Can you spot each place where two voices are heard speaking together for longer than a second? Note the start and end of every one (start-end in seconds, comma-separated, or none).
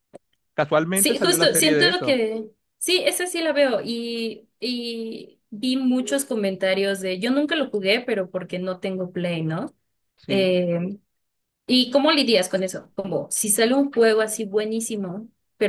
0.9-2.2